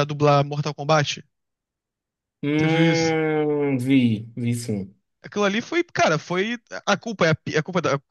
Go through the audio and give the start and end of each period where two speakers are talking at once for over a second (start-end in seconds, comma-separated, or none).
none